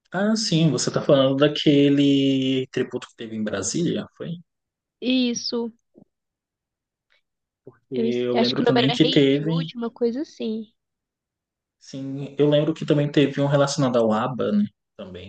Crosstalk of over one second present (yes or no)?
yes